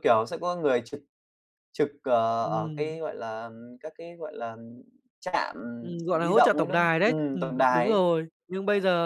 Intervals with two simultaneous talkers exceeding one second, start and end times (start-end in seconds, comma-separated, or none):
6.1-8.0